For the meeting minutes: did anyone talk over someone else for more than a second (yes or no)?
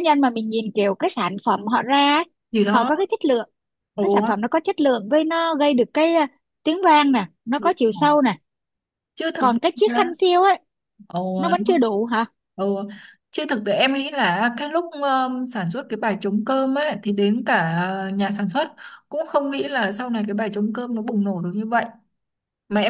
no